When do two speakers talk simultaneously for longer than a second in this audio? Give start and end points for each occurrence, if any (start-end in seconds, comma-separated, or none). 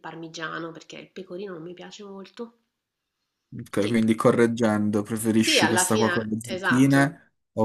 5.4-7.1